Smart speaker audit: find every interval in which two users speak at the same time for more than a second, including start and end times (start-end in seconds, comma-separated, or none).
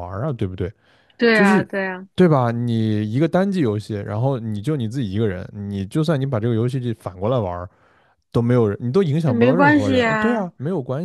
9.2-10.5